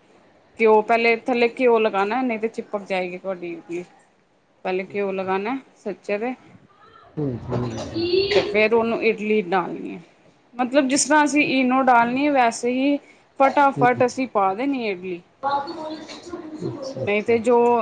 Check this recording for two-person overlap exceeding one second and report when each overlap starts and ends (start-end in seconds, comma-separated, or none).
none